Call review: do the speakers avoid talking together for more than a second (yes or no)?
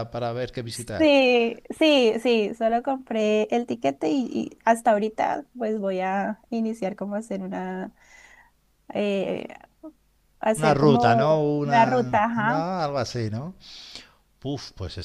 no